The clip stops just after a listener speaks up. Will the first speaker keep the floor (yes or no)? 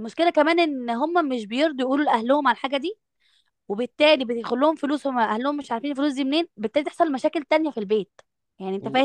yes